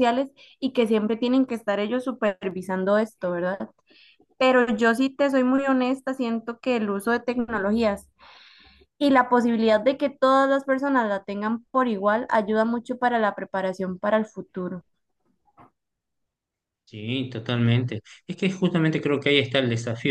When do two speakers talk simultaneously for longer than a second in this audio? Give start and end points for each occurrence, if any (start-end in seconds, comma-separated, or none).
none